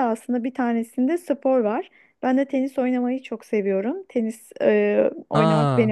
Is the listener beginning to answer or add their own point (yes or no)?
no